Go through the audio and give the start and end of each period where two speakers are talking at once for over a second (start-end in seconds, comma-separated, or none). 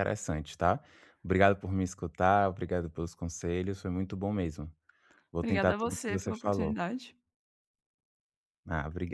5.4-6.8